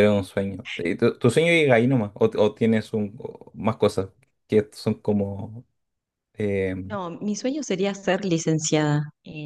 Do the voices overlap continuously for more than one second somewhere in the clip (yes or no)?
no